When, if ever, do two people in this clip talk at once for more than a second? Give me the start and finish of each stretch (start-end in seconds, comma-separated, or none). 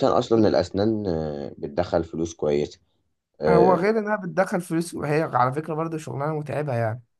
none